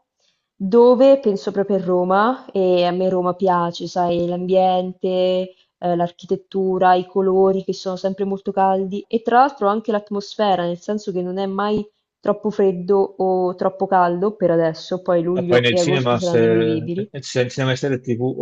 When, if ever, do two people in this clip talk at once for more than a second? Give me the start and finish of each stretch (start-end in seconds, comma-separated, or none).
15.3-17.1